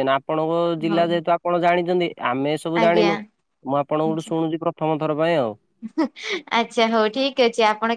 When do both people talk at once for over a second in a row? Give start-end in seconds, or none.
none